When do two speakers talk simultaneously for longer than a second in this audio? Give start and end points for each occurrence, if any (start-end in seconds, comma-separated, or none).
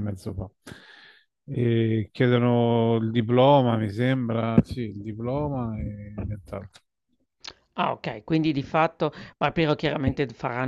none